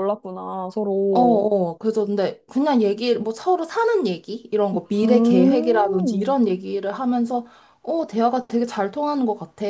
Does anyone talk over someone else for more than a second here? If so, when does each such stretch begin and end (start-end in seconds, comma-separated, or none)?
5.0-6.3